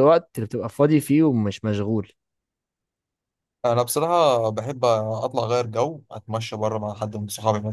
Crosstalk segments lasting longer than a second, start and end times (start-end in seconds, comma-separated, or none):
none